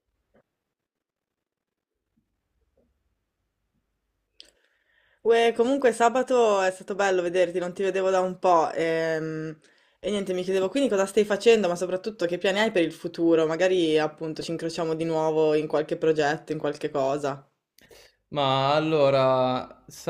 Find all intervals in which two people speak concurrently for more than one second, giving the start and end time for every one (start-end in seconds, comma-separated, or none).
none